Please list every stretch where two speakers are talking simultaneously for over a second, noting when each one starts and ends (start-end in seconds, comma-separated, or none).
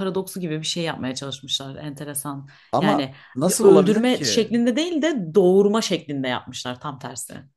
2.7-4.5